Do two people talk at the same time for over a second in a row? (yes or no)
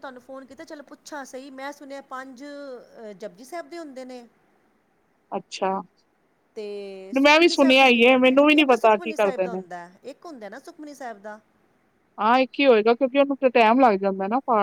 yes